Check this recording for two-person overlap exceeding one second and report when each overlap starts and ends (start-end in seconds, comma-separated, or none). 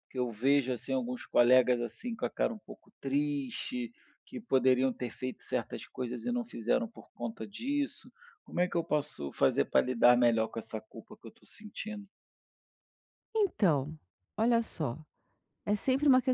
none